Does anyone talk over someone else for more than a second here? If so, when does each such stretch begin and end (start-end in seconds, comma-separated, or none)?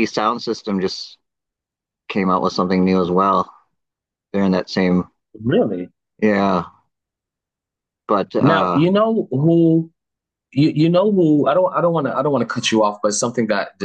none